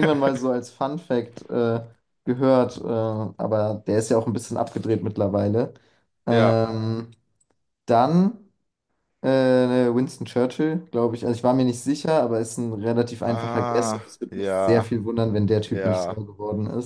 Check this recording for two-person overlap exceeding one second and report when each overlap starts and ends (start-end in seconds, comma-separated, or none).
13.2-15.0